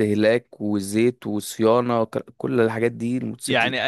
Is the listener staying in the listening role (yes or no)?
no